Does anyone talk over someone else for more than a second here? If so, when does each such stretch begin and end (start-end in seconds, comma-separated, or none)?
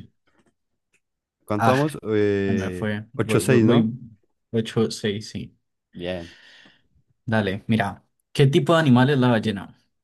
2.5-3.9